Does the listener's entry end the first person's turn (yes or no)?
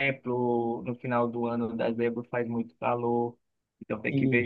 no